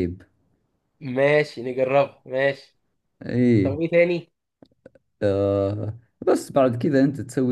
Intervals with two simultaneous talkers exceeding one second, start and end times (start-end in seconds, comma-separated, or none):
none